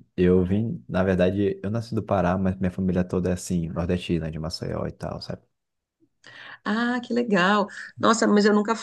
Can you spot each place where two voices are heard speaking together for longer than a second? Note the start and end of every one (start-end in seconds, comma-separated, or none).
none